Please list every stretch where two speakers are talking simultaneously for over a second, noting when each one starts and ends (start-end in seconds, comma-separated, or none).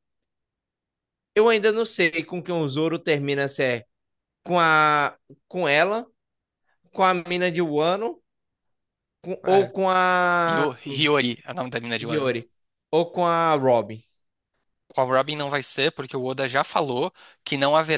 none